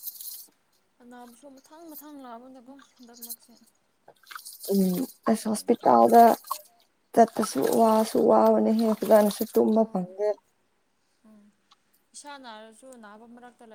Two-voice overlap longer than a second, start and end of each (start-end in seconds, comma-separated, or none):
none